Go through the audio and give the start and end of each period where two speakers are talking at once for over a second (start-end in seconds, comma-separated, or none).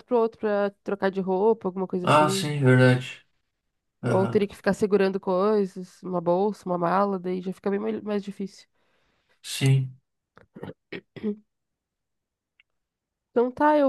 none